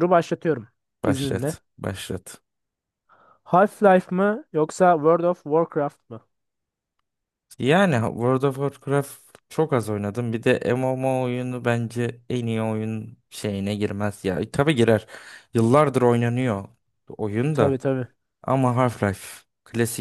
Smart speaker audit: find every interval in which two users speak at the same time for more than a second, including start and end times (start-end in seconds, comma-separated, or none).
none